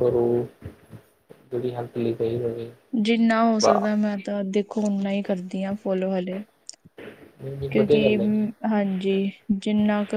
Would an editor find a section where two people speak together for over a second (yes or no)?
no